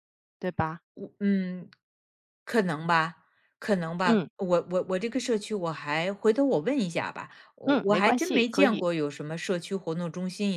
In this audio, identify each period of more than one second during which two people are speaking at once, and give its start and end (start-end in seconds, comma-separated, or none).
7.6-8.9